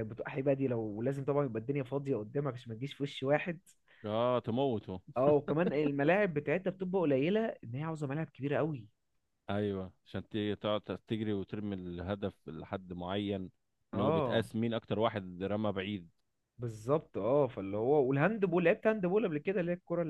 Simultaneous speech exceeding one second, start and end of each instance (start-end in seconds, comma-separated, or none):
none